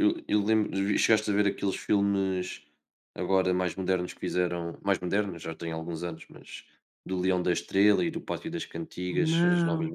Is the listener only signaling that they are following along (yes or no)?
no